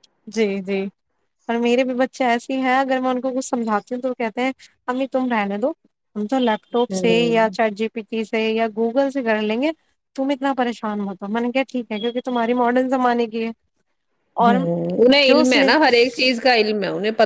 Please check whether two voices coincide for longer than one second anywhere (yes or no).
no